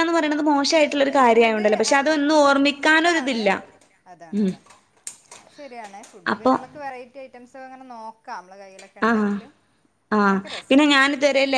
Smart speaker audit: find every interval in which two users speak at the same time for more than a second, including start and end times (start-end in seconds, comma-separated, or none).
0.9-3.4